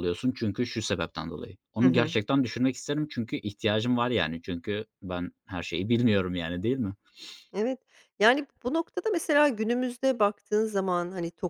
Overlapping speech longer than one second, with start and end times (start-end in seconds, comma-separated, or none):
none